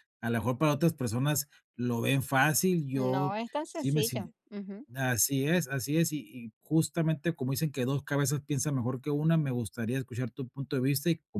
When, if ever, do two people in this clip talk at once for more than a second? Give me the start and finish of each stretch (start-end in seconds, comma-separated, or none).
3.0-4.3